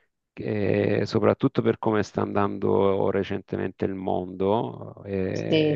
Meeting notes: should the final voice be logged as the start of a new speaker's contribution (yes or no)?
no